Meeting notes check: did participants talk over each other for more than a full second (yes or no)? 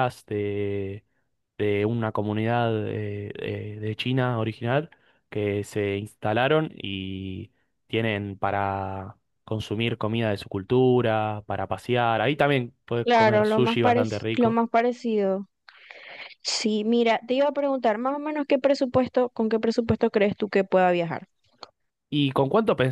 yes